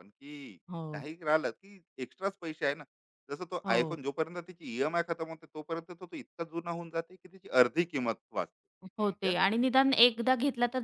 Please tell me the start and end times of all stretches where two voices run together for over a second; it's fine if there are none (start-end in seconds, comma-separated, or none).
none